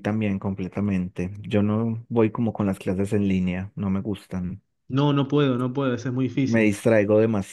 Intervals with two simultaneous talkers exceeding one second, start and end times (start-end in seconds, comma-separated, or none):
none